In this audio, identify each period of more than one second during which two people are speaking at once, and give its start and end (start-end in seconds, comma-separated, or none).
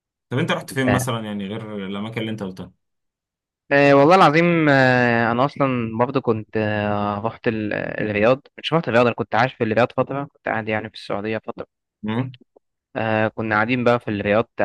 none